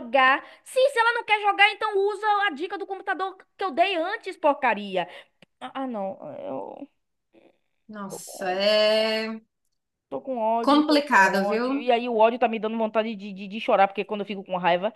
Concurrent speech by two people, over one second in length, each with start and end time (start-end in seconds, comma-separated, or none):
10.6-11.9